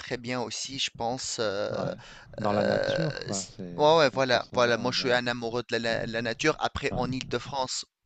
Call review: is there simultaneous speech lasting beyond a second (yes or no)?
yes